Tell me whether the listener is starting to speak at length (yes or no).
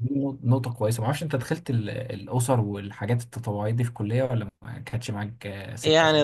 yes